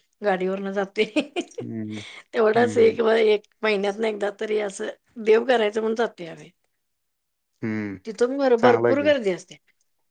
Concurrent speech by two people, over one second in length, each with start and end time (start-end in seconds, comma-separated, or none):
none